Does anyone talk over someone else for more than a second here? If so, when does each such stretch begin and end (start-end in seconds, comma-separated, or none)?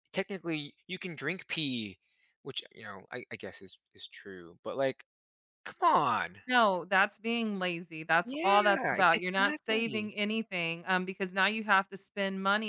8.2-10.1